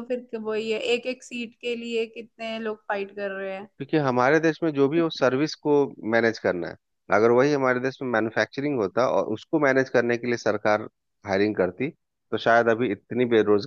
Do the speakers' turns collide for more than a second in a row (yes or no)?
no